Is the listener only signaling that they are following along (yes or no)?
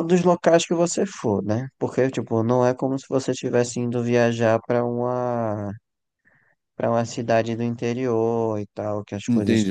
no